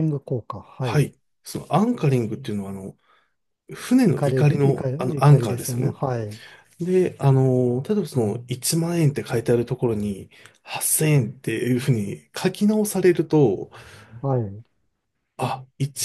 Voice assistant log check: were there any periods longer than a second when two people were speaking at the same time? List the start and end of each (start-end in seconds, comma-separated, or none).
4.0-6.0